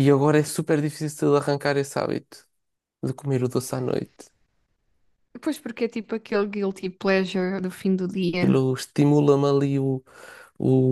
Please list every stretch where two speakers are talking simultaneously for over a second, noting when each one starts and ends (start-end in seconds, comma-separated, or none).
none